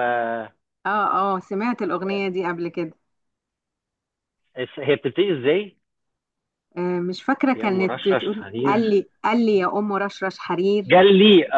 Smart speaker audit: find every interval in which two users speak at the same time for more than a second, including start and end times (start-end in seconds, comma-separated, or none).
7.5-9.1